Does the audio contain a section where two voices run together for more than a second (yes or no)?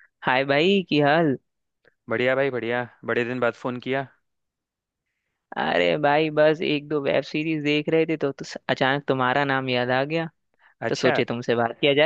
no